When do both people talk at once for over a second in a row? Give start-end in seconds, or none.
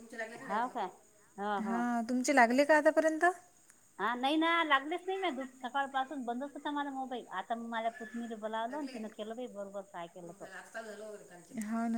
none